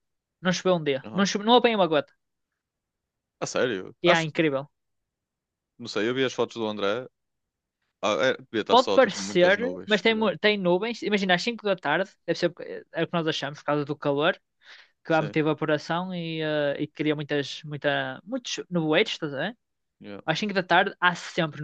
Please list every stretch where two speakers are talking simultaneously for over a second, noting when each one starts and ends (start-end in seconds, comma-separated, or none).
8.7-10.3